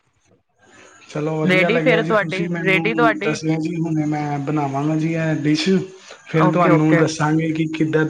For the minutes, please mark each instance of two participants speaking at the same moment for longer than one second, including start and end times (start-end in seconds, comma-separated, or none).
1.5-3.4